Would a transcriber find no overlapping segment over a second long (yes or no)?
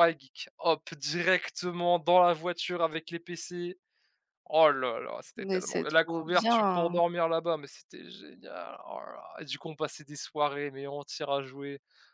no